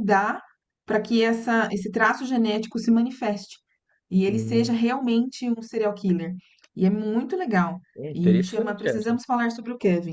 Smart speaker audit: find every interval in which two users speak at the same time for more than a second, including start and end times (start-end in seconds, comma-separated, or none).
8.0-9.2